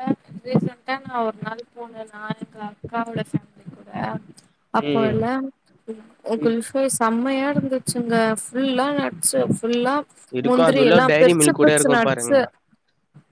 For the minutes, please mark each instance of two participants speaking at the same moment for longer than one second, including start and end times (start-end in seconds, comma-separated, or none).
10.5-12.4